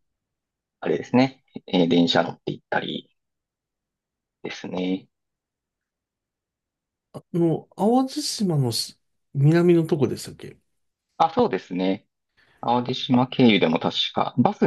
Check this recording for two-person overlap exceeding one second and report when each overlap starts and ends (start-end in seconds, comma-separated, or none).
none